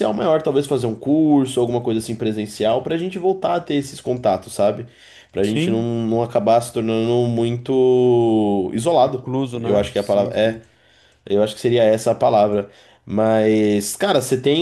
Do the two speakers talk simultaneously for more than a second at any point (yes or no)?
yes